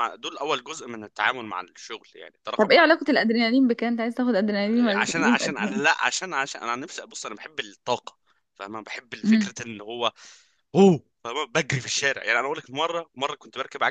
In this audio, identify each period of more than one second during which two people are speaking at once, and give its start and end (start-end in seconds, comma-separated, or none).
4.7-6.0